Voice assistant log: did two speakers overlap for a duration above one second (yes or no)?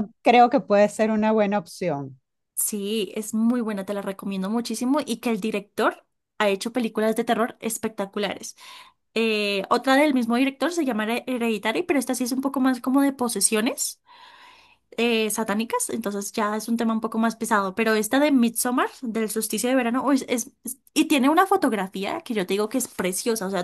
no